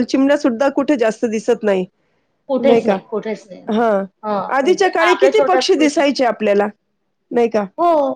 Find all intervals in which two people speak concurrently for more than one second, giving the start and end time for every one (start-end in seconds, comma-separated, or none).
4.6-6.2